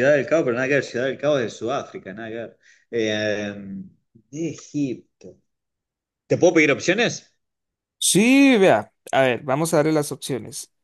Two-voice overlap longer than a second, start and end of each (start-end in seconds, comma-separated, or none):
none